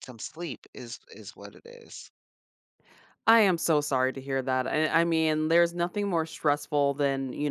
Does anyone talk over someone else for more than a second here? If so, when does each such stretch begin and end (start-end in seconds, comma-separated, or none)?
none